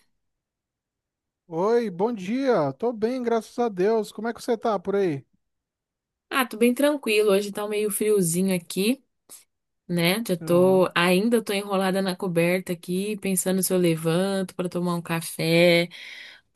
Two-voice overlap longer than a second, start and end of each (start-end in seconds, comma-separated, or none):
none